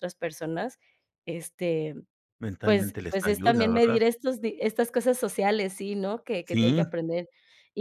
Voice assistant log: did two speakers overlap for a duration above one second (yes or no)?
yes